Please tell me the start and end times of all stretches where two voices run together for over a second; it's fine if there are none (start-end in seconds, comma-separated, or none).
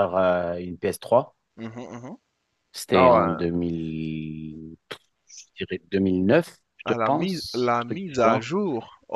6.9-8.5